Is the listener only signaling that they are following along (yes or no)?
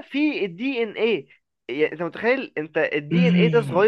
no